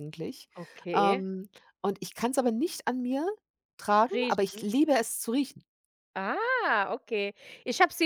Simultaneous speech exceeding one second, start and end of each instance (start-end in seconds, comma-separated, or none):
none